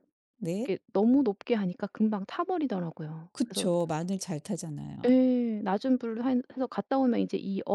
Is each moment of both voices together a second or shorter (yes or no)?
yes